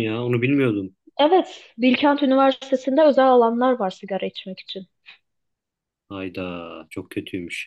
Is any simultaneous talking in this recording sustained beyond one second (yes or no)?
no